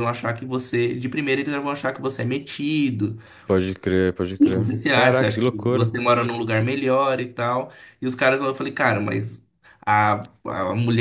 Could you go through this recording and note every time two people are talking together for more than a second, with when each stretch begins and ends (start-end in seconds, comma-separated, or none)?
4.4-5.9